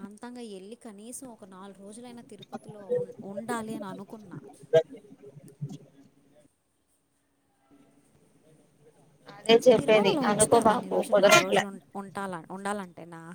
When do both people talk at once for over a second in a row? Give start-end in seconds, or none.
9.8-11.6